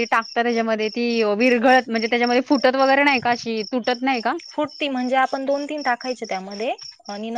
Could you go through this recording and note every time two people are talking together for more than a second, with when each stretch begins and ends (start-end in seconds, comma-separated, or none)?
none